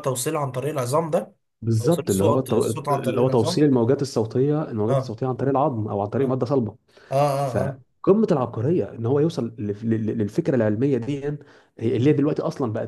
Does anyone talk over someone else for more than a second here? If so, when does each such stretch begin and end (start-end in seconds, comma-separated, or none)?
1.8-3.7